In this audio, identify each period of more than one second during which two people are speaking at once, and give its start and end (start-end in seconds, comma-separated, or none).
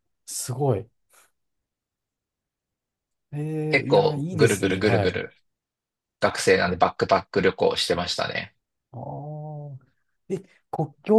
3.7-5.2